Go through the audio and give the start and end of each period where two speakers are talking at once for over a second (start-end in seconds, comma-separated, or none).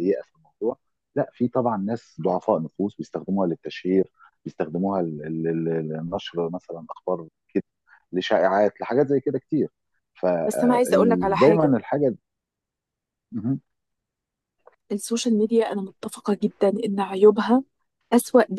10.5-11.8